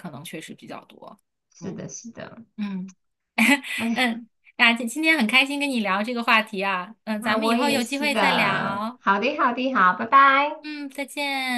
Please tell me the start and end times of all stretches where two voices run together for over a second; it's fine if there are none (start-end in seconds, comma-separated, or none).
7.2-9.0